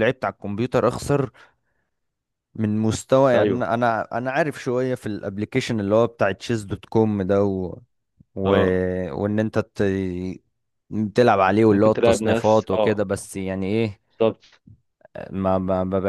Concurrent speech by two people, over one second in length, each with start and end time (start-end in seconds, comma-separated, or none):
11.7-13.0